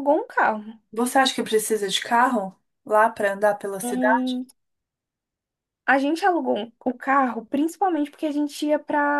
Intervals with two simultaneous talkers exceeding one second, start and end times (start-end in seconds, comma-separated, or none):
none